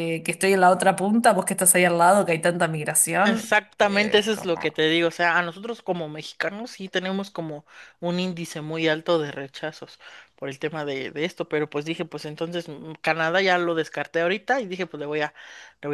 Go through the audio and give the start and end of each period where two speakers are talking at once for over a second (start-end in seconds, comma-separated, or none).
3.2-4.8